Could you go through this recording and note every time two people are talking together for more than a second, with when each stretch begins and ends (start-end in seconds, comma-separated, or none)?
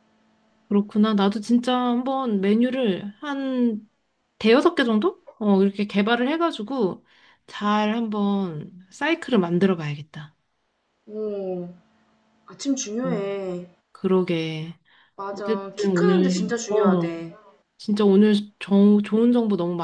15.3-17.2